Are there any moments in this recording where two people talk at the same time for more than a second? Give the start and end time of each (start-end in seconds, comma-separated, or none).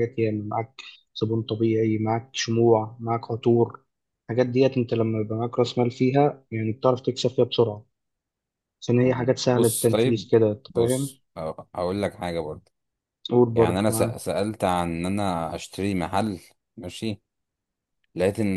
9.0-11.2